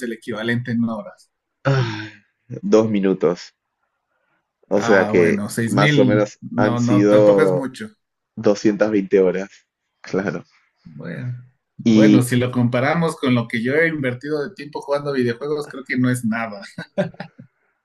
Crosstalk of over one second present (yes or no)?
yes